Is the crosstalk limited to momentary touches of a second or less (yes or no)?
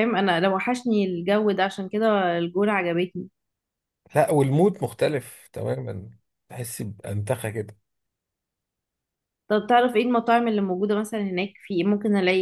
yes